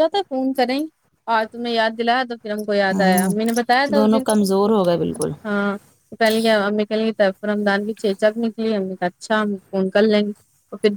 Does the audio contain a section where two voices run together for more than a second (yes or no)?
no